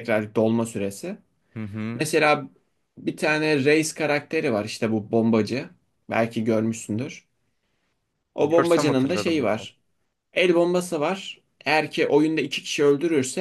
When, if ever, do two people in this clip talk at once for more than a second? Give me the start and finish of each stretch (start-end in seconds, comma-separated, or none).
8.4-9.7